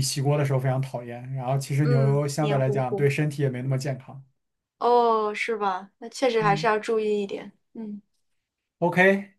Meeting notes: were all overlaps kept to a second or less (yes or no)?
no